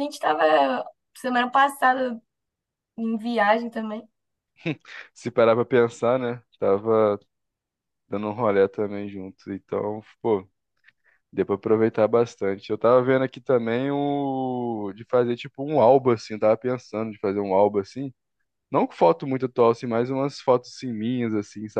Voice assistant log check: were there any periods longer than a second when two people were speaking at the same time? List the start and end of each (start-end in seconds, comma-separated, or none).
none